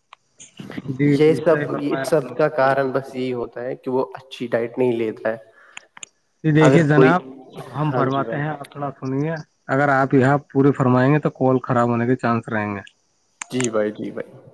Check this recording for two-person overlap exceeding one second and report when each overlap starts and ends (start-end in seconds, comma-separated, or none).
1.2-3.5